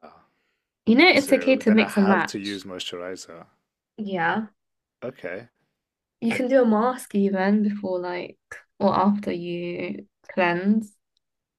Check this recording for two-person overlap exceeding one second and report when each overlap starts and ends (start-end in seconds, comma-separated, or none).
1.1-2.6